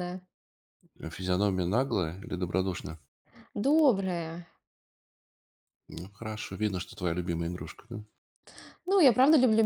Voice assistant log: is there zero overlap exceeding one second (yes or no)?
yes